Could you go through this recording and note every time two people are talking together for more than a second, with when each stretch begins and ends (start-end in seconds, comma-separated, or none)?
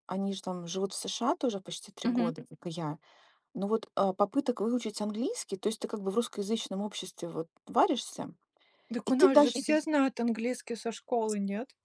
none